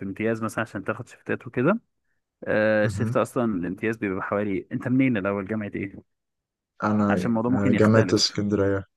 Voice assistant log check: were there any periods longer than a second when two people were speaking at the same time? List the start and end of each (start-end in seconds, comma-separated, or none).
7.1-8.4